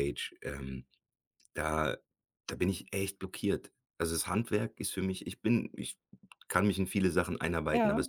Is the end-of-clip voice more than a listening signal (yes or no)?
no